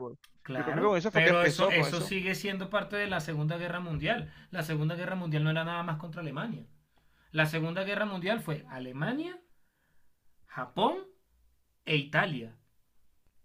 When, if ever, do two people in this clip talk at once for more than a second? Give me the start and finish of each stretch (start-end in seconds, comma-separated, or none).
0.5-2.1